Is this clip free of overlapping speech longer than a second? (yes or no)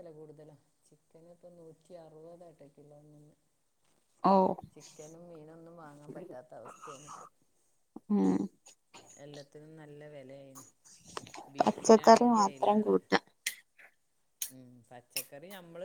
no